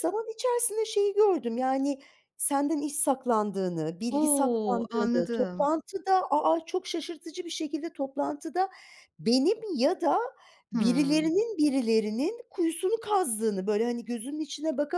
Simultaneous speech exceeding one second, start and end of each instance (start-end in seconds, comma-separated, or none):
4.1-5.7